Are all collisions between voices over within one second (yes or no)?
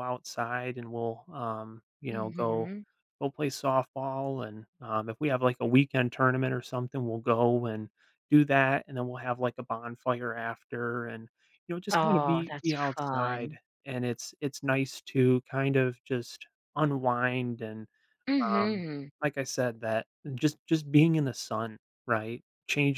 no